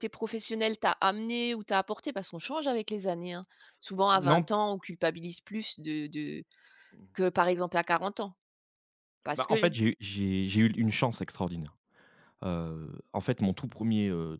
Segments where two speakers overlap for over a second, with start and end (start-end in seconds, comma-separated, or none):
none